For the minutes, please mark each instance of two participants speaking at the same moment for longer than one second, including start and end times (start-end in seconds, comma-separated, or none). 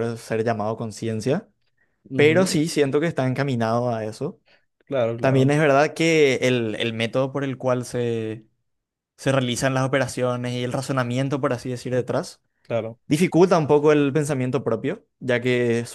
none